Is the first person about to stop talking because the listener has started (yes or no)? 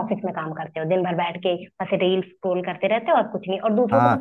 yes